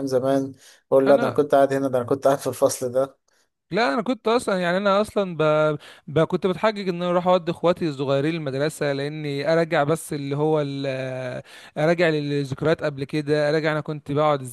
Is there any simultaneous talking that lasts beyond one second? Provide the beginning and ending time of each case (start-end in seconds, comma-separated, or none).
none